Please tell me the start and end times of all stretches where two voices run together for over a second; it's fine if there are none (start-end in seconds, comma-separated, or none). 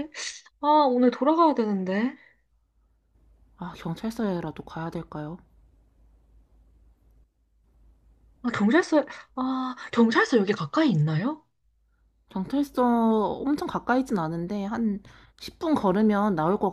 none